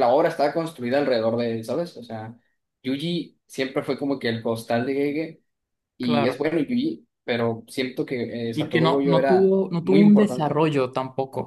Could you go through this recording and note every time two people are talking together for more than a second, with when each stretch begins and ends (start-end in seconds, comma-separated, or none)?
8.5-10.6